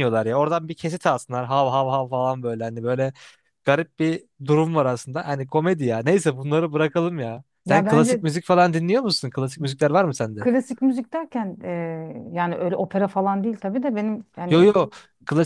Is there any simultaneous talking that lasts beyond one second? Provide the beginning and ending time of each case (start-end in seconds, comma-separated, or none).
none